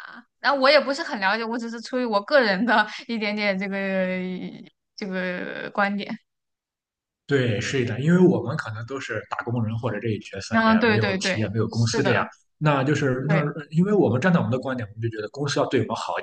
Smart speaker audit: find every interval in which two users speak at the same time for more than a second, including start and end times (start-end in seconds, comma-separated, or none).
10.5-12.3